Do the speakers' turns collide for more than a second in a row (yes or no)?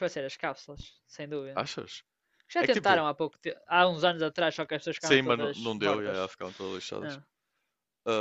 yes